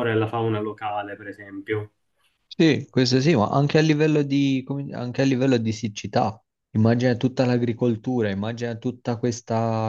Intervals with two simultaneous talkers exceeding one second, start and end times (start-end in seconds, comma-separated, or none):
none